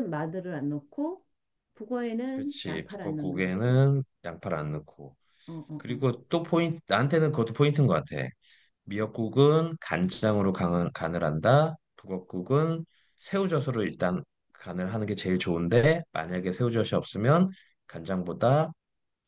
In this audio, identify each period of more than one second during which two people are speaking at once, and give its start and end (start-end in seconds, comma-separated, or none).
2.3-3.8